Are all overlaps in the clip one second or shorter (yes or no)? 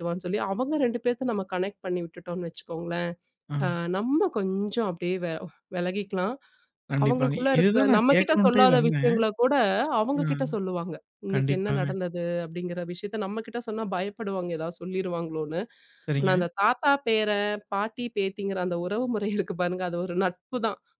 no